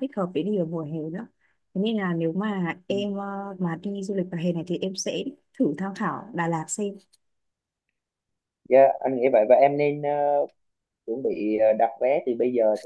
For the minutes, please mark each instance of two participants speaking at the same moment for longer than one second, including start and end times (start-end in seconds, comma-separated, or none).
none